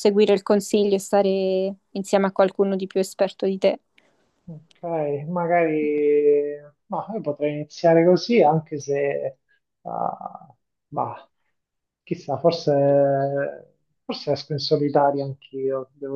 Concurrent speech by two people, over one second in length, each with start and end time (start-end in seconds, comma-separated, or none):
none